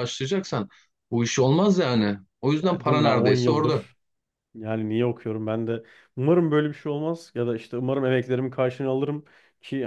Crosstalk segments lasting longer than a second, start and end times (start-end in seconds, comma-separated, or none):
2.7-3.9